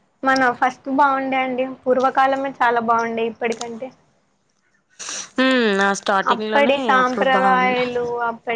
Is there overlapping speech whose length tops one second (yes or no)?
yes